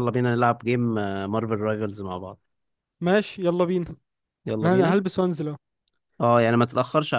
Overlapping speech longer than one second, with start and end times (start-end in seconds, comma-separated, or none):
none